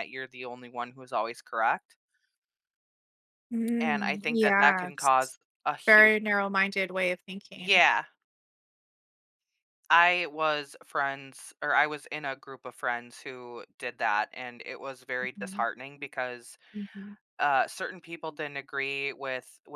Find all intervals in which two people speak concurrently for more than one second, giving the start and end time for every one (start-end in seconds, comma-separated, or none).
3.8-5.1